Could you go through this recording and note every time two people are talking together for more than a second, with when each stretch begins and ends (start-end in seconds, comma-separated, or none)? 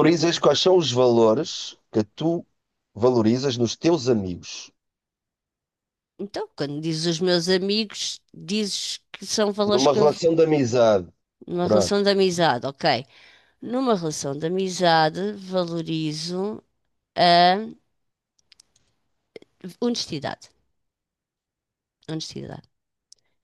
none